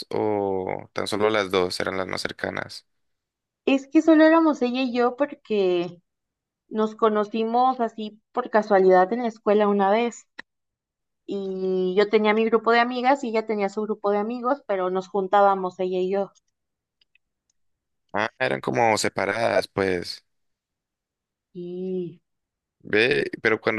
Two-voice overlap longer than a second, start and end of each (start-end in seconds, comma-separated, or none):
none